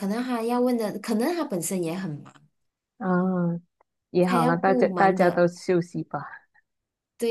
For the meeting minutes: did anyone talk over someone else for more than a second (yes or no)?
yes